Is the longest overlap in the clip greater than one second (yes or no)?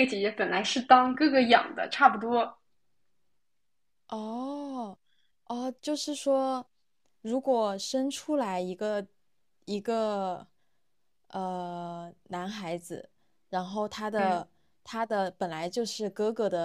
no